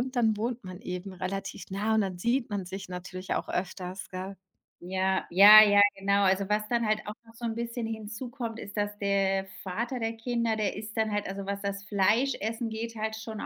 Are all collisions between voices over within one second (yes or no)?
yes